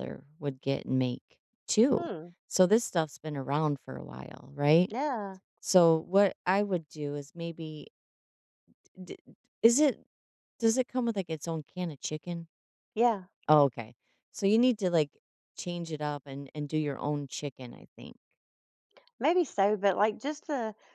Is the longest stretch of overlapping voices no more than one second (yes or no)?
yes